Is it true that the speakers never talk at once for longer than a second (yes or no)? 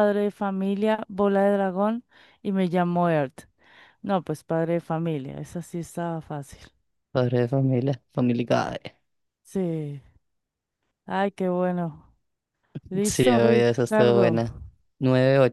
no